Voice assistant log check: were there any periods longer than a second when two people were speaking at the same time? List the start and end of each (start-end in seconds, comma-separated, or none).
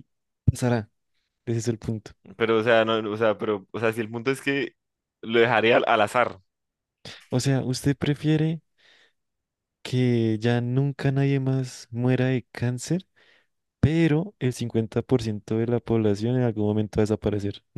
none